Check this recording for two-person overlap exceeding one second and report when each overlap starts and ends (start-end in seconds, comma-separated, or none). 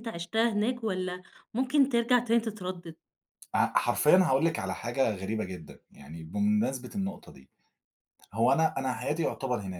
none